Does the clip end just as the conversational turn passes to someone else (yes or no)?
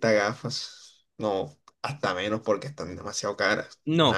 yes